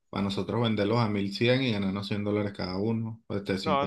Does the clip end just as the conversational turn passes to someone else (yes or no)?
yes